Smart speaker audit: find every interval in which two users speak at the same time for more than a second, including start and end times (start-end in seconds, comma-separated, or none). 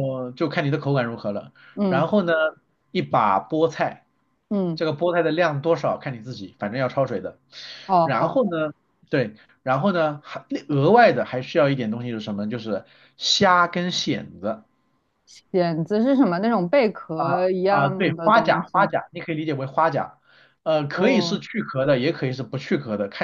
17.7-18.9